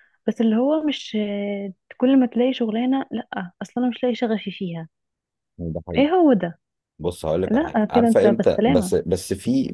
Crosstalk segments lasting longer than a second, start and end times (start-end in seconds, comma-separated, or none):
7.5-8.9